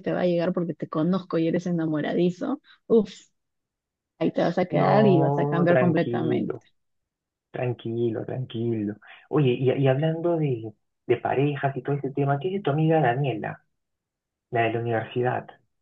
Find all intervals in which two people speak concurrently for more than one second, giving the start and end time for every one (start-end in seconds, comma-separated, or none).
4.7-6.6